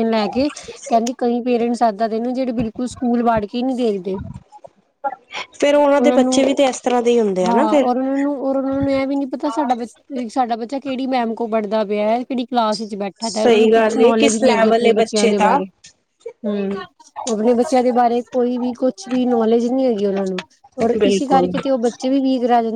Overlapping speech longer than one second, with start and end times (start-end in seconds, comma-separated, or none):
13.2-15.6